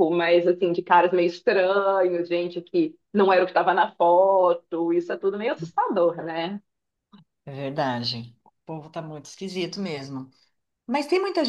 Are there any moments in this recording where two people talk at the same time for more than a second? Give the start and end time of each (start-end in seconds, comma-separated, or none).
none